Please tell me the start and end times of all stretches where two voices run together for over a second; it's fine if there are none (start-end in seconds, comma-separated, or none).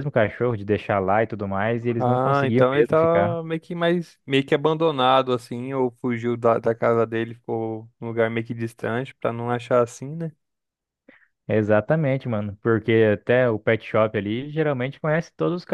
2.0-3.4